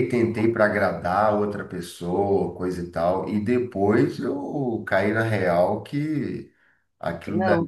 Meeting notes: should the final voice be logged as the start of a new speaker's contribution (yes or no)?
no